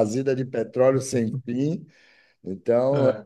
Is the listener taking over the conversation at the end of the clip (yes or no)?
no